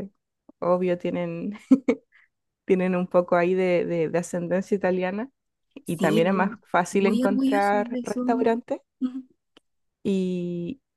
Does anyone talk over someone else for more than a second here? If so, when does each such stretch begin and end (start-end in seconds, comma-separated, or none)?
5.8-8.5